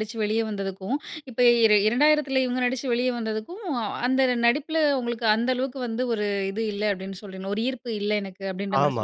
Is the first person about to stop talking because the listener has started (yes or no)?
yes